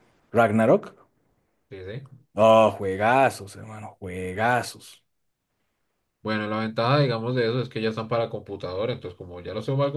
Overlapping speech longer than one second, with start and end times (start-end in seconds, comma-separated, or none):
none